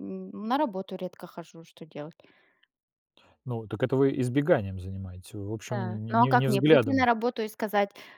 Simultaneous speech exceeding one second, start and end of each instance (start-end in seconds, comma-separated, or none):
5.7-7.1